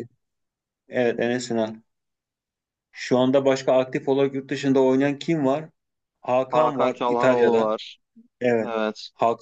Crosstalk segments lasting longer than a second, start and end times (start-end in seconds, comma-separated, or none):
6.5-7.7